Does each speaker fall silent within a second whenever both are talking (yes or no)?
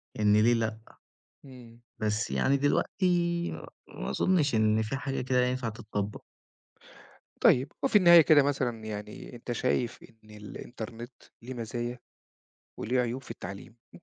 yes